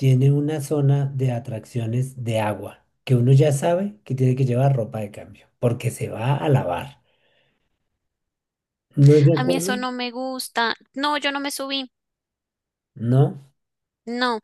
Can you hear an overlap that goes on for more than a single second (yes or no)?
no